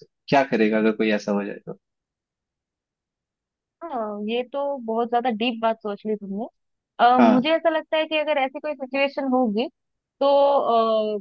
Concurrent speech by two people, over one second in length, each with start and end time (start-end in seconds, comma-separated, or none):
none